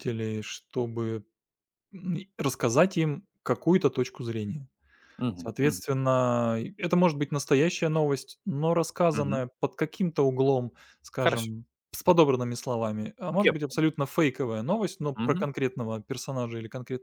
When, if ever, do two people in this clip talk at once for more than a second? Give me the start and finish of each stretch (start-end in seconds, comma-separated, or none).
none